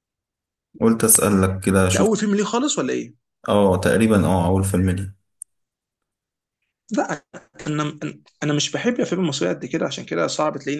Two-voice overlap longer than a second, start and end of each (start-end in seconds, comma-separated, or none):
none